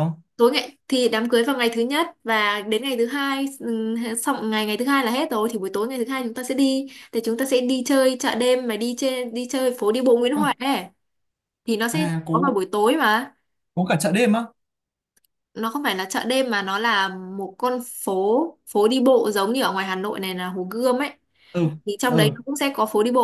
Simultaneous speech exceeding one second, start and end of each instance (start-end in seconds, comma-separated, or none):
none